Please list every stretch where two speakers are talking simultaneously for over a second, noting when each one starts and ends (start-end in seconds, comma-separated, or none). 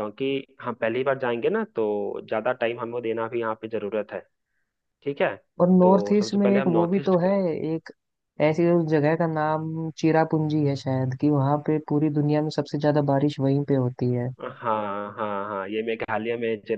5.8-7.2